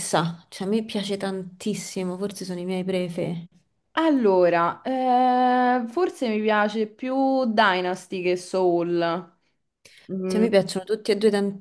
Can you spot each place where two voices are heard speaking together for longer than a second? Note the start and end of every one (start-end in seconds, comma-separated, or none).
none